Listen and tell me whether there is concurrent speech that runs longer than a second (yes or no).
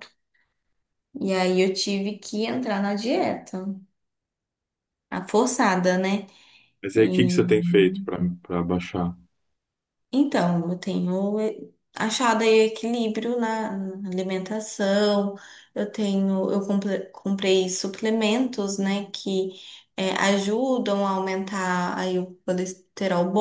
no